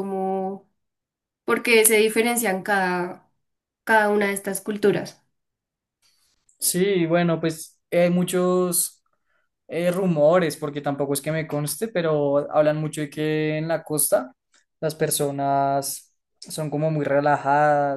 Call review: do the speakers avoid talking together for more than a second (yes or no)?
yes